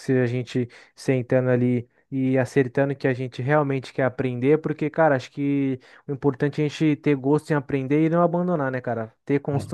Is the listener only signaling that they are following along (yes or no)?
yes